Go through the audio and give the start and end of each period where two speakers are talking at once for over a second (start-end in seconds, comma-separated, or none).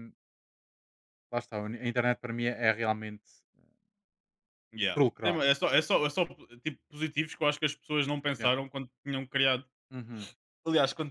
none